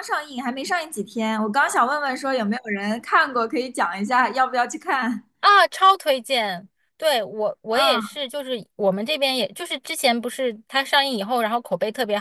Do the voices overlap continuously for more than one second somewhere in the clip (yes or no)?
no